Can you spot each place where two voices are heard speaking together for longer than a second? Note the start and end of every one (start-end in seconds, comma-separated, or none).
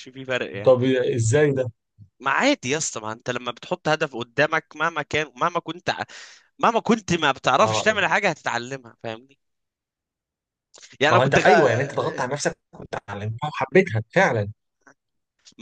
none